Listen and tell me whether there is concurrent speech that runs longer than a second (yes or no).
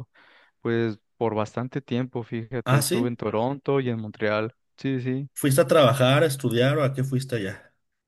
no